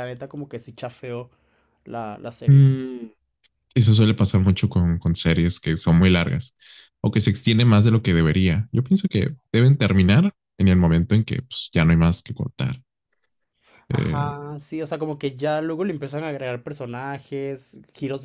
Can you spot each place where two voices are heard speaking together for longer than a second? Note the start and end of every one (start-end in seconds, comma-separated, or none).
none